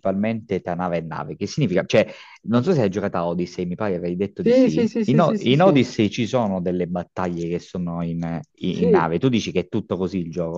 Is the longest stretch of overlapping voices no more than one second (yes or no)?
no